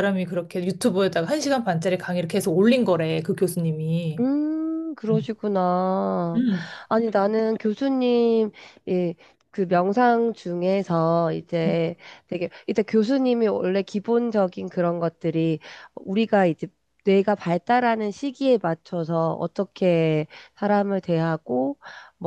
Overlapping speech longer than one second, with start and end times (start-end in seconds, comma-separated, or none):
none